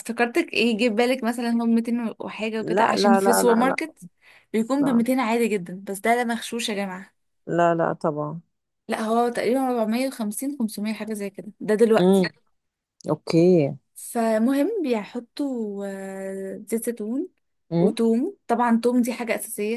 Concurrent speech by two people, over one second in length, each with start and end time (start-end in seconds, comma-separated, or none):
2.6-3.9